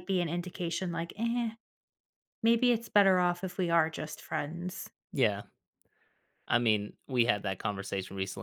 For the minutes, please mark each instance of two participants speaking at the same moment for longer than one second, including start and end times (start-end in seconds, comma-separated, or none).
none